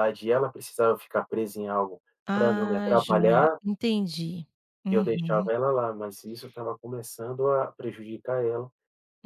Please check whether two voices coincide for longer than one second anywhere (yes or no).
yes